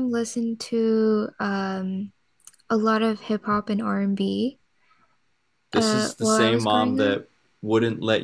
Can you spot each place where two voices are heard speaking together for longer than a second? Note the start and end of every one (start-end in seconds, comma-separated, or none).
5.7-7.2